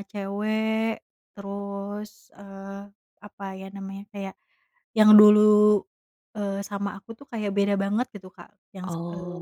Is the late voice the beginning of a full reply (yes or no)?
no